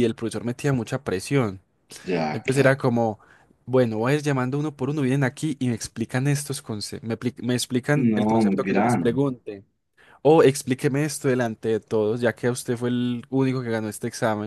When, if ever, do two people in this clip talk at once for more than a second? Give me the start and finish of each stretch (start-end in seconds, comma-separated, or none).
7.9-9.2